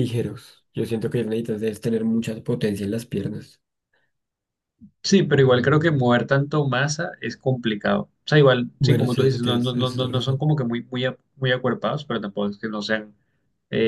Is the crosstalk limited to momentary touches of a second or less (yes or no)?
no